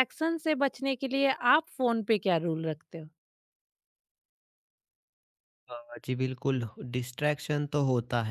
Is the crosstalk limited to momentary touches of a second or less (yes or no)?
yes